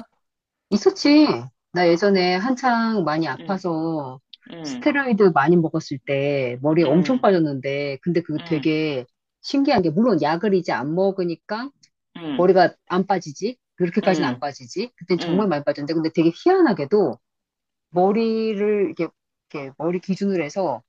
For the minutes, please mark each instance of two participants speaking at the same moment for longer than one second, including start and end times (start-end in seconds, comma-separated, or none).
none